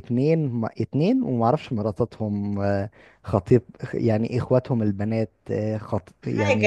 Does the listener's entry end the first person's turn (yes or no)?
no